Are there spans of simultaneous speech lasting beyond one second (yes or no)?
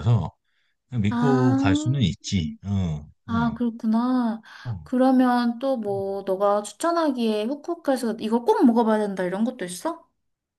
no